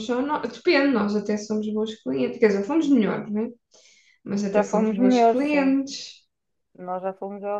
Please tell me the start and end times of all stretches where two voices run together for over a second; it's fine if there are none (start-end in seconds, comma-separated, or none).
4.5-5.8